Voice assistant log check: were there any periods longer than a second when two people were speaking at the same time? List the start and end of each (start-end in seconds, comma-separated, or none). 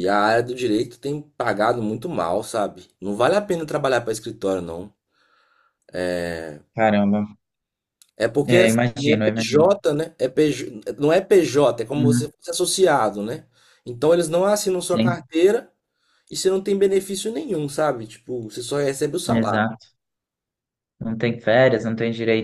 8.5-9.8